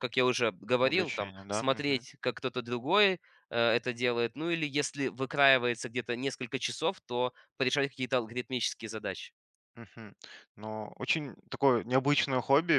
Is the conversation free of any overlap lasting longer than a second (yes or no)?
no